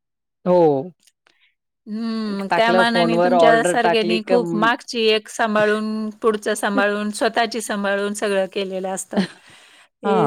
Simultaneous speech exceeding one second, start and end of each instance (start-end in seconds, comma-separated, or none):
2.5-4.4